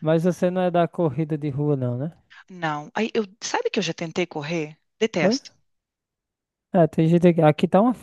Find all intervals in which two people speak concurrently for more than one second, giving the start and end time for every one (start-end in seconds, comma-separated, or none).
none